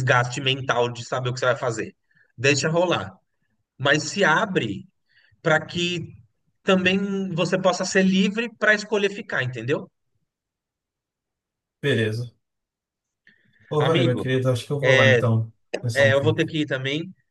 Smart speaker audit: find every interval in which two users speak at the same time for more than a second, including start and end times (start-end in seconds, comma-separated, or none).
none